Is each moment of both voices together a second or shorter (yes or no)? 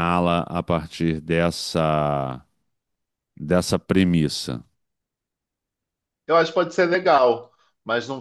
yes